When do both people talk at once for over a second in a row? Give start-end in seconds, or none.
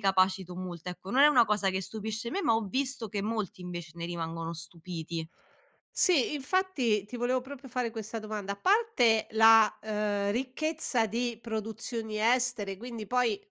none